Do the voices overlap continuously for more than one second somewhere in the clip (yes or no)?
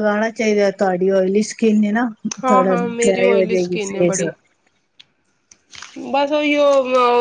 yes